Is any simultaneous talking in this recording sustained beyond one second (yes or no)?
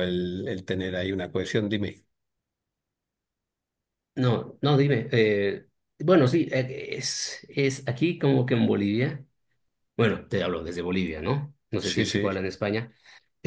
no